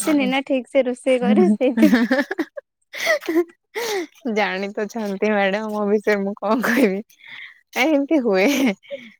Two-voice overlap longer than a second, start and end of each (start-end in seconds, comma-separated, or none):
none